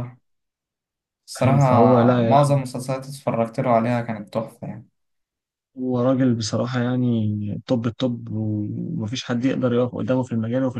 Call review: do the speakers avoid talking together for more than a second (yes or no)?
no